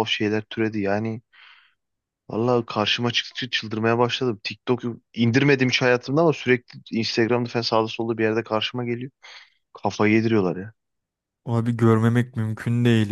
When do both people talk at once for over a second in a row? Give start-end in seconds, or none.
none